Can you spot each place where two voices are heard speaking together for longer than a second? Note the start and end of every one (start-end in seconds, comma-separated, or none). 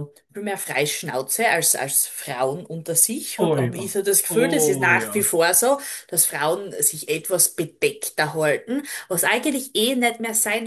3.4-5.3